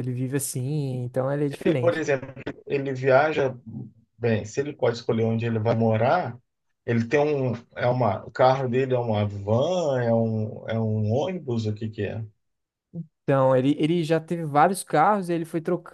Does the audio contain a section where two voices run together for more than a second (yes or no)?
no